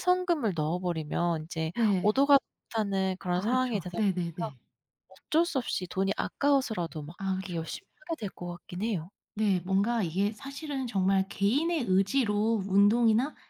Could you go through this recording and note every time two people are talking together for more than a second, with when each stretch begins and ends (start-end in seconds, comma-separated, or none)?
3.3-4.5